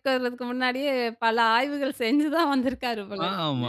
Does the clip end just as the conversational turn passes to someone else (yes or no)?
yes